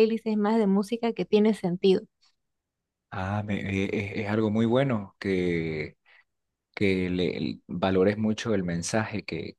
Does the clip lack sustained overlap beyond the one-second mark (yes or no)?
yes